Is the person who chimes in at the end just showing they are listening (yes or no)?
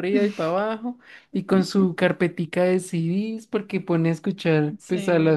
yes